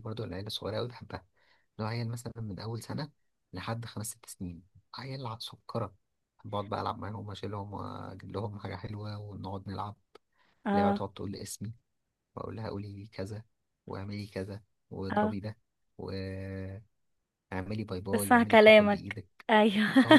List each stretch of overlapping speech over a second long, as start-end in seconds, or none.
18.1-19.5